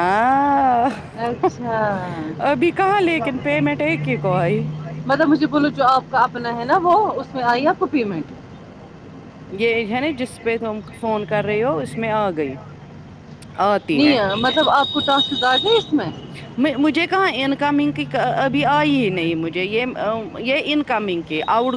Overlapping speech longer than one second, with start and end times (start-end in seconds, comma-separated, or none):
none